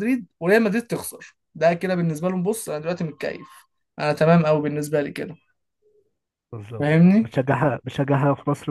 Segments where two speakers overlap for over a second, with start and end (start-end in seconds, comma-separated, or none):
none